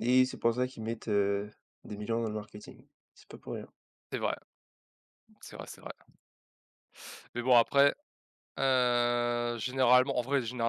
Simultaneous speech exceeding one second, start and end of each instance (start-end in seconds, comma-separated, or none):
none